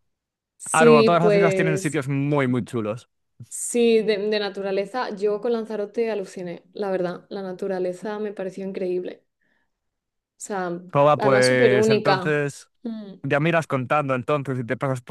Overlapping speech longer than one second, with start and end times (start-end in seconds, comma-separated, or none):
0.7-2.0, 11.2-12.4